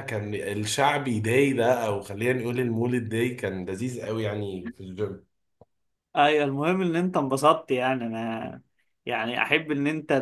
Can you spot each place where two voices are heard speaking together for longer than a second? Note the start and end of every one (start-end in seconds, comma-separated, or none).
none